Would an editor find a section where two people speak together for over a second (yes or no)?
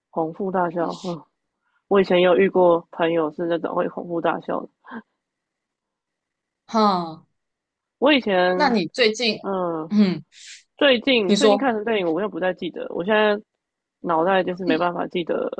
no